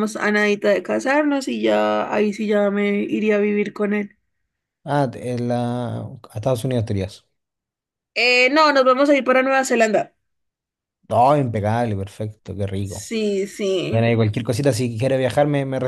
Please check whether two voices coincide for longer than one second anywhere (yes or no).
no